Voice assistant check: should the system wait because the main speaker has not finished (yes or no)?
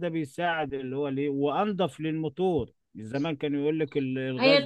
no